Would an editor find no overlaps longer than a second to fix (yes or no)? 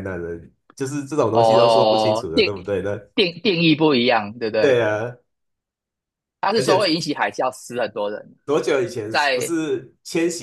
no